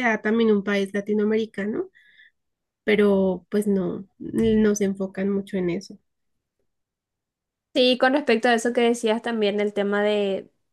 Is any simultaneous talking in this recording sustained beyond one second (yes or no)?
no